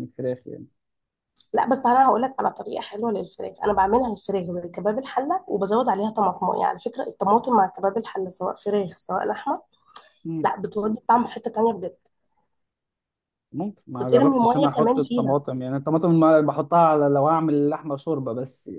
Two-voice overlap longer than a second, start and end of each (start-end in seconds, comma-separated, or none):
14.0-15.4